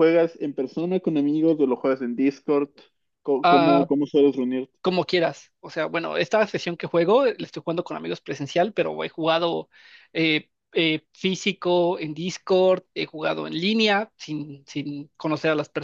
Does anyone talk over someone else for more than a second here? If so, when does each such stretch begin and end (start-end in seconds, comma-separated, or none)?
none